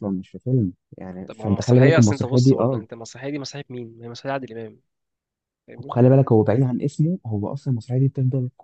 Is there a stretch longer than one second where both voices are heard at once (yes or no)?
yes